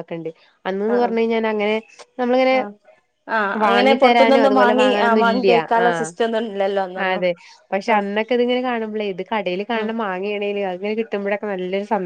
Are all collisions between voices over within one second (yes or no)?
no